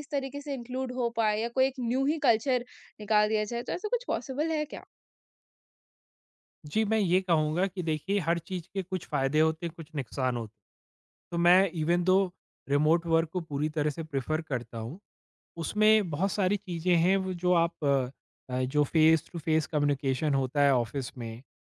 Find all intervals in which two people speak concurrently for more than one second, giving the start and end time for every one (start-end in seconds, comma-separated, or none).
none